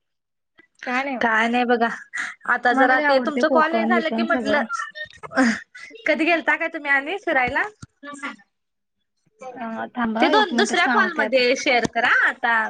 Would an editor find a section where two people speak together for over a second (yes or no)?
yes